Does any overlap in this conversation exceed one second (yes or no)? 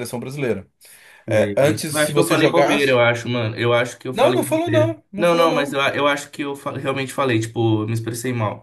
yes